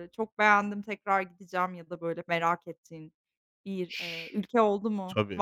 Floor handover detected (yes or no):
yes